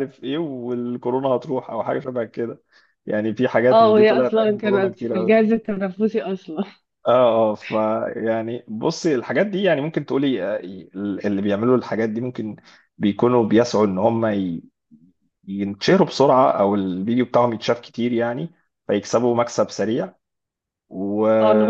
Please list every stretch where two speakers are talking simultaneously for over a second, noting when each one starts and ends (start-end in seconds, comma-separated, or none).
3.7-5.4